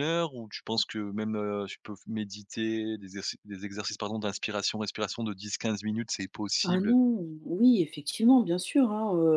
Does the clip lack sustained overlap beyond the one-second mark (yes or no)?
yes